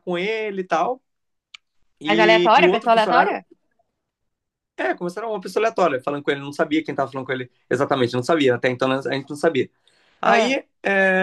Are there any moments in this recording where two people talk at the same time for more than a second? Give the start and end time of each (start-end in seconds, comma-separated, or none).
2.0-3.4